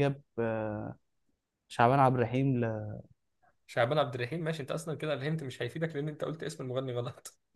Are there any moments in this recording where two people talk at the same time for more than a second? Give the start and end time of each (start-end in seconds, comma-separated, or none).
none